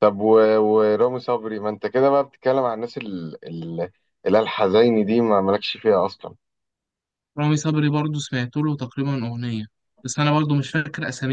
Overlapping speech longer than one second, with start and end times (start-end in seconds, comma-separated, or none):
none